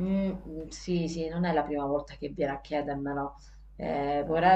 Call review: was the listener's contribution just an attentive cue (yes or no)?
yes